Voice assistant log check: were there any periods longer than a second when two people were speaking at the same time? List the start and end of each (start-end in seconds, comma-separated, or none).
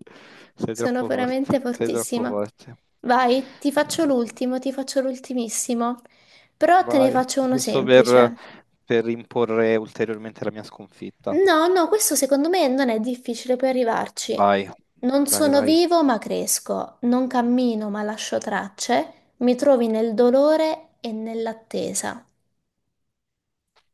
0.7-2.4, 6.8-8.3